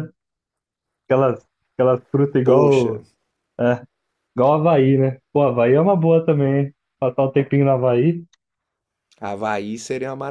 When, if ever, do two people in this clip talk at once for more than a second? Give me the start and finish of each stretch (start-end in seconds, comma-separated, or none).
none